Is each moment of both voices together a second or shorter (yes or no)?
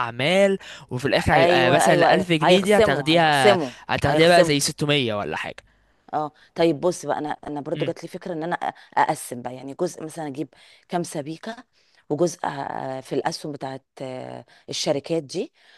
no